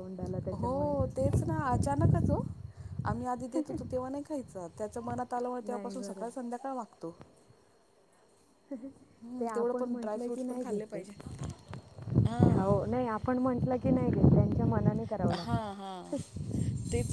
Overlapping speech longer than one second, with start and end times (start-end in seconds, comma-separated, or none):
9.4-11.0